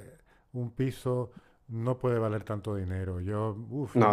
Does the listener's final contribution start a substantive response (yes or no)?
yes